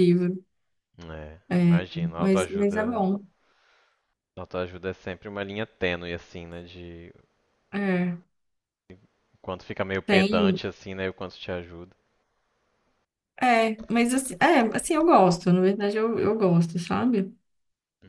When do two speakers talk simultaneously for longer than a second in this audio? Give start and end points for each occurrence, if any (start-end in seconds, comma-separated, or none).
1.5-3.1